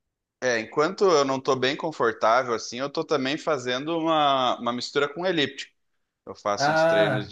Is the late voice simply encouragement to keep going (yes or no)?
yes